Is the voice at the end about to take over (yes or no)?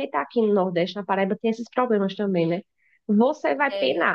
no